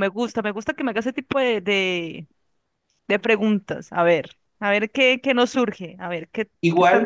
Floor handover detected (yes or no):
yes